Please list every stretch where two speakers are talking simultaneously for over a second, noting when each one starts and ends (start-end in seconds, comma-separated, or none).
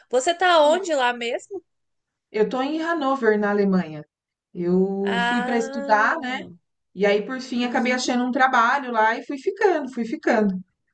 5.0-6.4